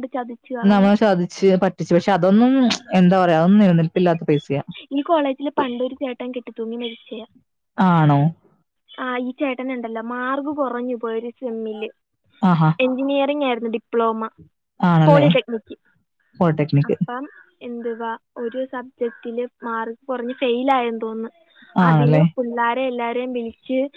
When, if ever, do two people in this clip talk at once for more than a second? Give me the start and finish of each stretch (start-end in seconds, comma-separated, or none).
none